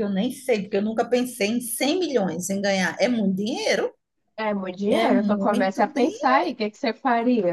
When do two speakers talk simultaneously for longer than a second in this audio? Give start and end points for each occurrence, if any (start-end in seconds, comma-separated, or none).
4.9-6.4